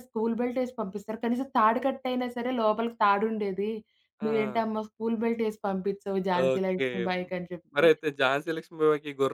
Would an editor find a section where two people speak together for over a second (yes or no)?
no